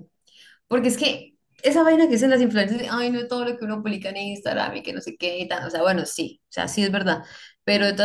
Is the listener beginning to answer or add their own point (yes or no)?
no